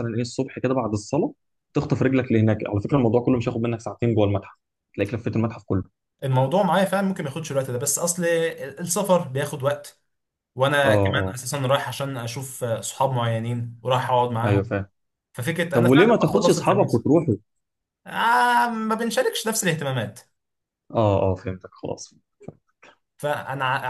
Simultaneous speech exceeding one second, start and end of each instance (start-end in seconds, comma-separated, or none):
15.8-17.0